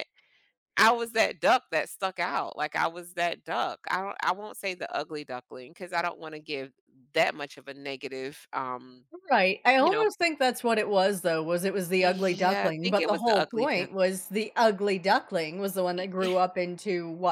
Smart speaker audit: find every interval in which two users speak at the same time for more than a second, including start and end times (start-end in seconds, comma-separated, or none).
12.0-13.9